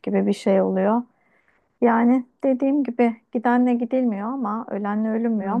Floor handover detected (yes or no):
no